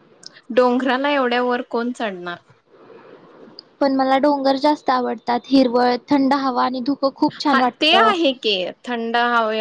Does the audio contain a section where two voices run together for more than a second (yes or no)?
no